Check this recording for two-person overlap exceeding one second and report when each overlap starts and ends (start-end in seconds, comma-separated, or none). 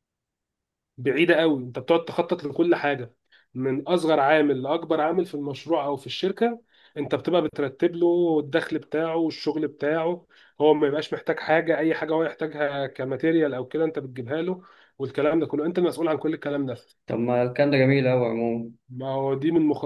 none